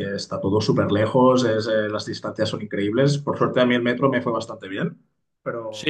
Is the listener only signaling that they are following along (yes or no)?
no